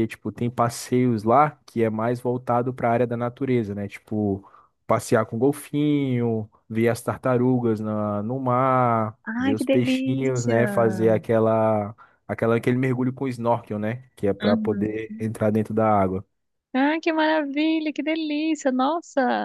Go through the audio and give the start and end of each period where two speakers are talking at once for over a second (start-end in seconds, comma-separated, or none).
9.2-10.6